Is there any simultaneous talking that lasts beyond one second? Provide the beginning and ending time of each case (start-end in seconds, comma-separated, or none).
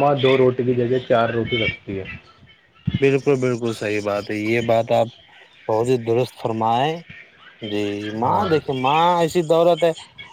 none